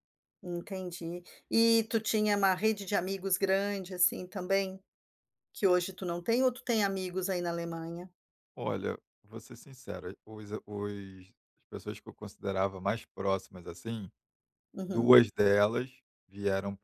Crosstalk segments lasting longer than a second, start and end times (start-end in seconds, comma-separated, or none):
none